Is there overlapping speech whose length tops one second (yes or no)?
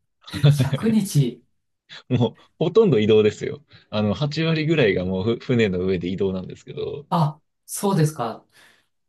no